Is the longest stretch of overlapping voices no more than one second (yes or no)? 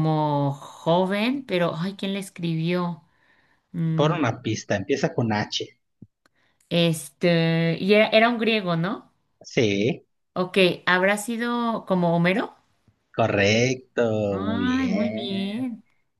no